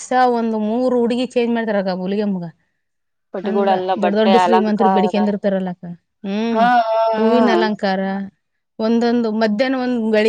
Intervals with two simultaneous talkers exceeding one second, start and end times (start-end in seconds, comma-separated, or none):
3.5-5.2